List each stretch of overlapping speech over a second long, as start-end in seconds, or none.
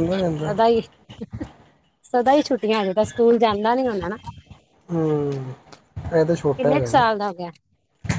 none